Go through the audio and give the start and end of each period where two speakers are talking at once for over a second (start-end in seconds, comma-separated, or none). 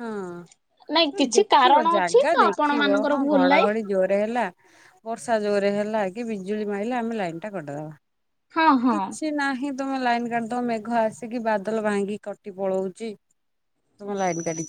0.9-3.7